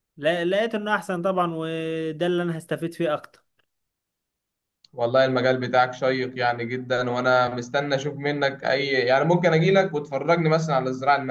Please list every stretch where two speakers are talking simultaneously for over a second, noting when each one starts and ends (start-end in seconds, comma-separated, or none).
none